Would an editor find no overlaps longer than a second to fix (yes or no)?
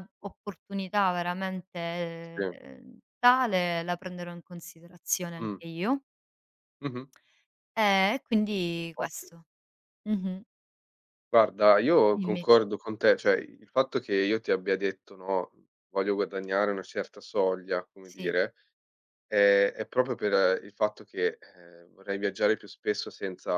yes